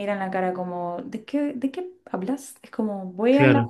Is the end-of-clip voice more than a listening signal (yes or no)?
no